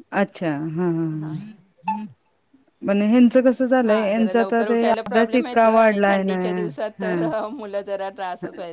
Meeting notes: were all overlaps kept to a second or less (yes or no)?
no